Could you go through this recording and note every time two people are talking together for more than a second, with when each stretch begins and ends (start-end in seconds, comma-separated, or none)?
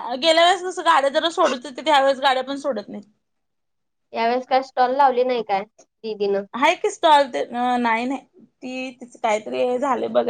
none